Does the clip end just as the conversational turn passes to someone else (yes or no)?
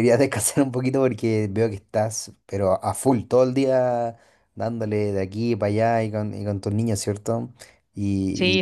yes